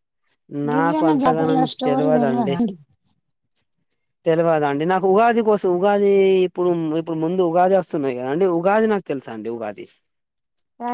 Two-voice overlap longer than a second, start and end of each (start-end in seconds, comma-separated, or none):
0.7-2.5